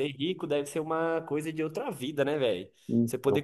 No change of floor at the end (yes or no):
yes